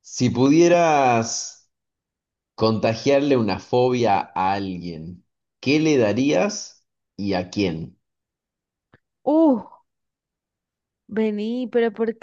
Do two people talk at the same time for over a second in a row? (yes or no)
no